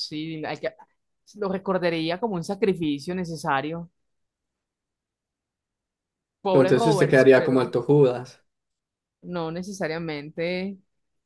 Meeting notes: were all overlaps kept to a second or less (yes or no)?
no